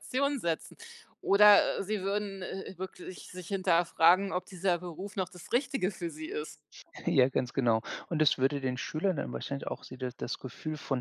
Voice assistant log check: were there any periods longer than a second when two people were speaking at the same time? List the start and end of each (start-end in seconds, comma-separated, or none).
none